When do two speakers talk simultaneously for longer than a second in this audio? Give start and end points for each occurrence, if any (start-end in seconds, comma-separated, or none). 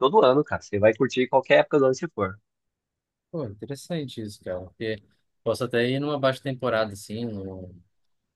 none